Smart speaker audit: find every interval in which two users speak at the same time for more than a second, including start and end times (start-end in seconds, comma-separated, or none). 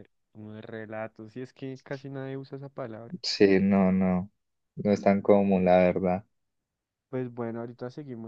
none